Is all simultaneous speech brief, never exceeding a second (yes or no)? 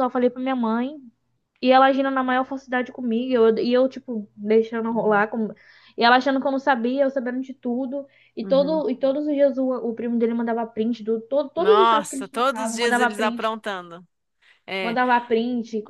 no